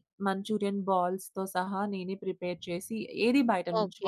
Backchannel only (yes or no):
no